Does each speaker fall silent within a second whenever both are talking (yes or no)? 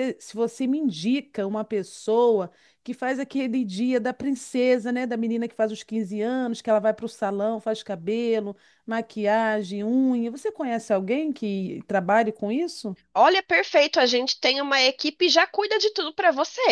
yes